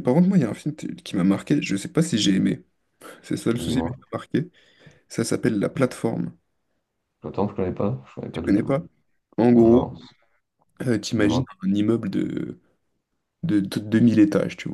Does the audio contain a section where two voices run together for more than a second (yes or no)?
no